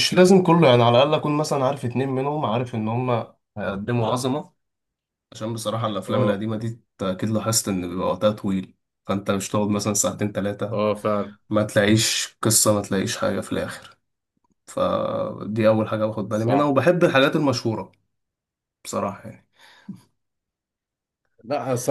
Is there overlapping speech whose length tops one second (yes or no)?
no